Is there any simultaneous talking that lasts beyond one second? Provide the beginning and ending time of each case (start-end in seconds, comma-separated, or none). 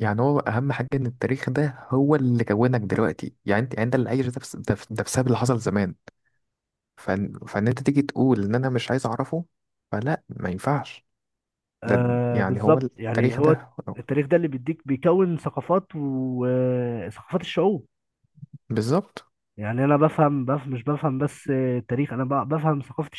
11.9-13.6